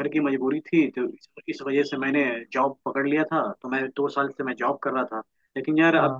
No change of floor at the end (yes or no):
yes